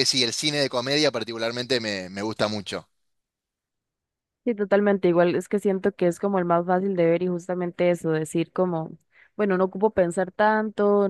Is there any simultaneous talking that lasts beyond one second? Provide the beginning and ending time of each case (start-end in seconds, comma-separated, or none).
none